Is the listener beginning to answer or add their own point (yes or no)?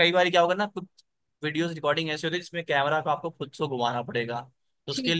no